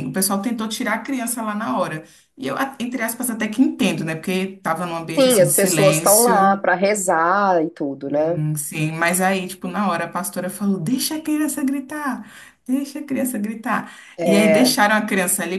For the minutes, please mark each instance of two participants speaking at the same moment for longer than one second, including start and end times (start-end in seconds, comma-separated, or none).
5.1-6.6